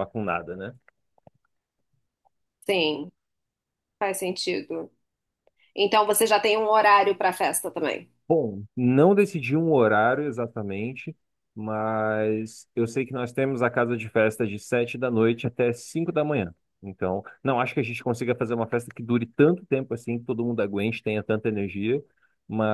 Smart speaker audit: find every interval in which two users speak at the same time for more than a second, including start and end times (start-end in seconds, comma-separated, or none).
none